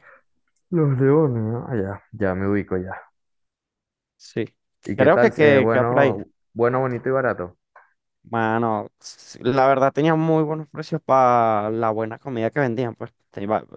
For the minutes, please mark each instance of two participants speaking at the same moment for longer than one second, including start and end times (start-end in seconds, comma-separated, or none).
5.0-6.2